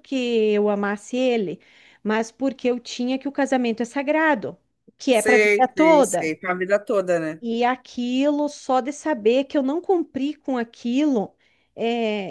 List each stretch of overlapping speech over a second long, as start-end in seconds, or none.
5.1-6.3